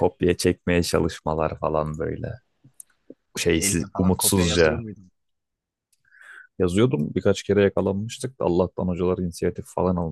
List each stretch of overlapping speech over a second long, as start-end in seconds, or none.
3.5-4.8